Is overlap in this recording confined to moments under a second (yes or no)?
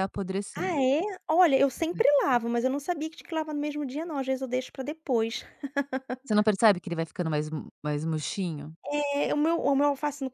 yes